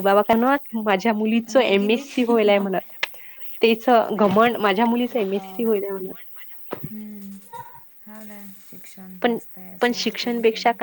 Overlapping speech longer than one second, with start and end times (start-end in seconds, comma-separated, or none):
4.3-5.8